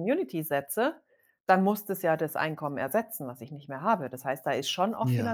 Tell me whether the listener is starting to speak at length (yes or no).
no